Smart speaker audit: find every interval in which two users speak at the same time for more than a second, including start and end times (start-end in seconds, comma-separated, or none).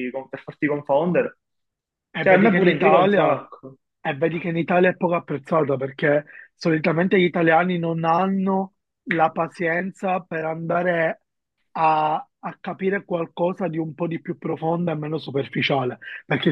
2.3-3.5